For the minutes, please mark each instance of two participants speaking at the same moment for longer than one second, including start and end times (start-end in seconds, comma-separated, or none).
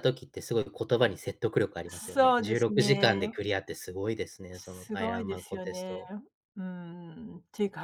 1.9-3.3, 4.5-6.0